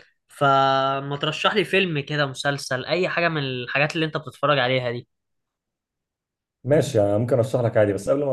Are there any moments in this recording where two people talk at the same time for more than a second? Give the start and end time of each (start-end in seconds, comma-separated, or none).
none